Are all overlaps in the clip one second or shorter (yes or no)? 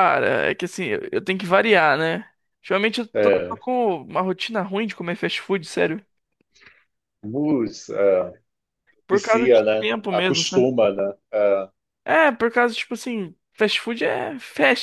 no